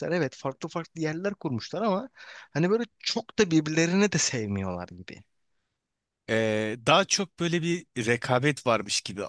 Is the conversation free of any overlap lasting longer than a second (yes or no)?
yes